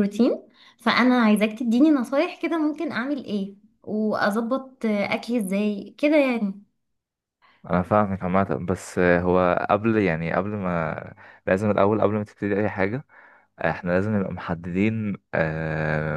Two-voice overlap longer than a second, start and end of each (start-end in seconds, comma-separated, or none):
none